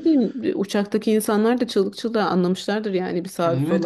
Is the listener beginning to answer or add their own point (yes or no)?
yes